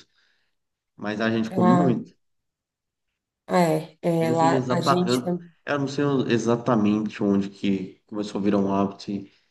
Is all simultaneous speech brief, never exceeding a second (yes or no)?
no